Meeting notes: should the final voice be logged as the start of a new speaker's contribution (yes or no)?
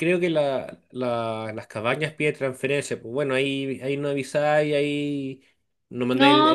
no